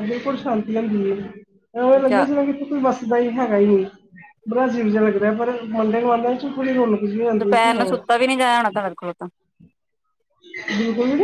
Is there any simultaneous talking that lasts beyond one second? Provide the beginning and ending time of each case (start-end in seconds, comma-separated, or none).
none